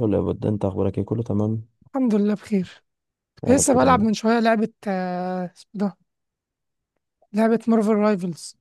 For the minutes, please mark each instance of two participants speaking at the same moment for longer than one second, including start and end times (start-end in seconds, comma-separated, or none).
none